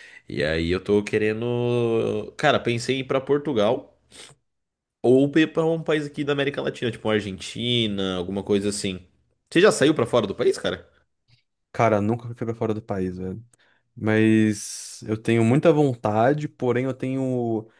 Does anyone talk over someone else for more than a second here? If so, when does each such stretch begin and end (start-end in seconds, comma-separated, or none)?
none